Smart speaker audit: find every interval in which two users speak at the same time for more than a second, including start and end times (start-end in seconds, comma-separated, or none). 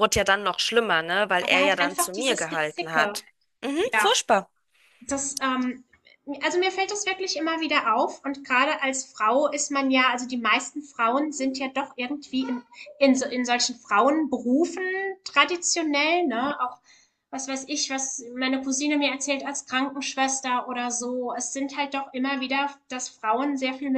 1.4-3.2